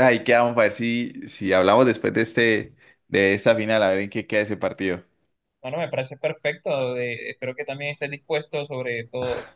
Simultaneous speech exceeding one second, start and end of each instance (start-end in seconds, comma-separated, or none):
none